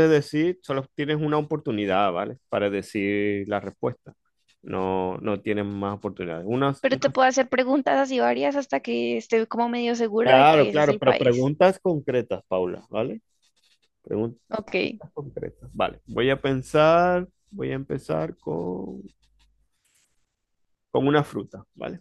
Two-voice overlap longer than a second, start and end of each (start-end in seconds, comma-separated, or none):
10.2-11.5